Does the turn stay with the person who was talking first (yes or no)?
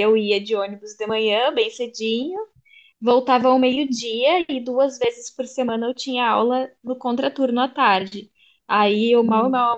yes